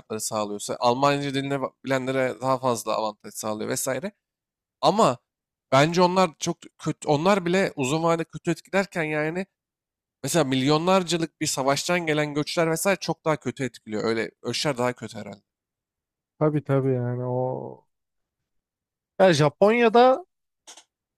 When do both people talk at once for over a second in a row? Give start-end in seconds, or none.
none